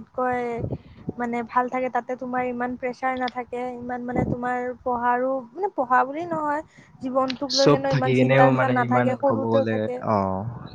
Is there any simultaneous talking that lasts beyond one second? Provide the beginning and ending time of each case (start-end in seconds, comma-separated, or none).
7.6-9.8